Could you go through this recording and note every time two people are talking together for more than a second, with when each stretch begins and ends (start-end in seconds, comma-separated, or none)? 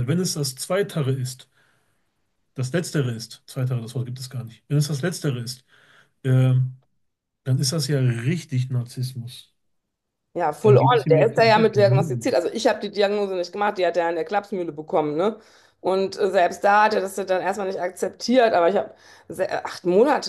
10.6-12.3